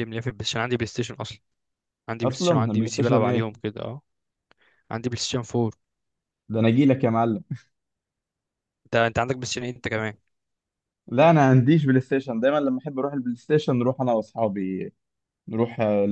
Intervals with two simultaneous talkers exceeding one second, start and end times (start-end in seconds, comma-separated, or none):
2.2-3.6